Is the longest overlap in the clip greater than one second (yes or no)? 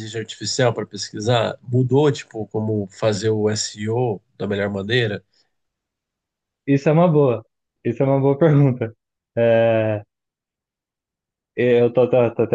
no